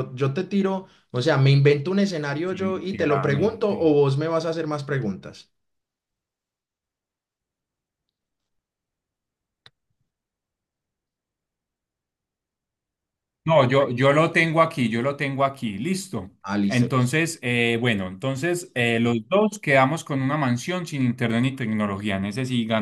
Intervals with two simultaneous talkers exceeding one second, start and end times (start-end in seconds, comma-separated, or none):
2.5-4.0